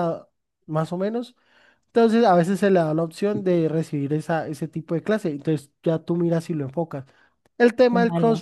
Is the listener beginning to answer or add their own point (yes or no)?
no